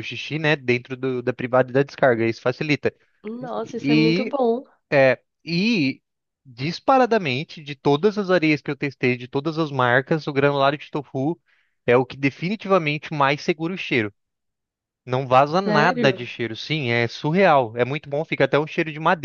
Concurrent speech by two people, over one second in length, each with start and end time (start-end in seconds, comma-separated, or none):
none